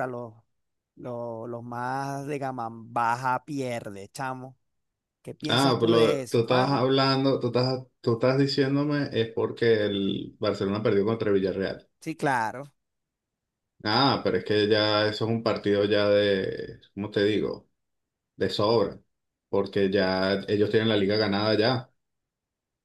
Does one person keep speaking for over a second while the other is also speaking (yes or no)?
yes